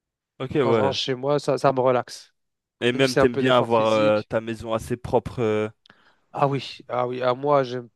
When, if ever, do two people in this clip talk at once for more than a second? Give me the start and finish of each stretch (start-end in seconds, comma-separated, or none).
2.9-4.3